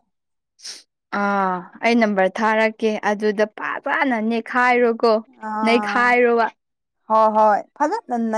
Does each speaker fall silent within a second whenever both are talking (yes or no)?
yes